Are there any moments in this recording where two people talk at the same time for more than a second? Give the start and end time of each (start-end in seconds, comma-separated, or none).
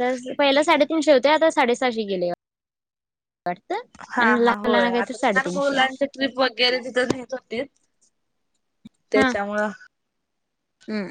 4.1-6.0